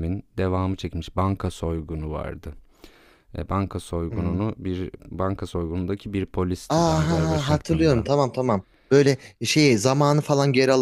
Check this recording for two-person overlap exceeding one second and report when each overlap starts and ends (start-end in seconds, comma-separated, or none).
6.7-8.1